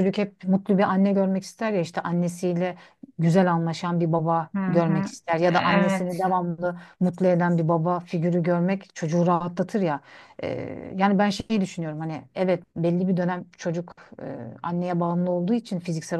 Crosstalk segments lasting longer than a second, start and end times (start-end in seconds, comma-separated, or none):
4.5-6.2